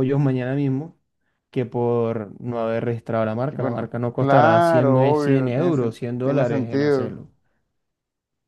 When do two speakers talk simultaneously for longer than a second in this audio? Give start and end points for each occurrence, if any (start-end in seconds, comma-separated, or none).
3.3-7.2